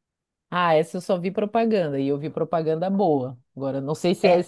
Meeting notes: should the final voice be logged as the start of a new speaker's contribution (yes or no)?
no